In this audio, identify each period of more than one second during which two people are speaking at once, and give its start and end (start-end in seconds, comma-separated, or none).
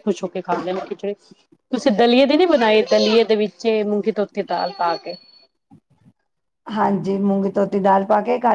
none